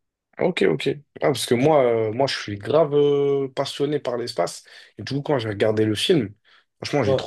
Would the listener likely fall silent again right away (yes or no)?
yes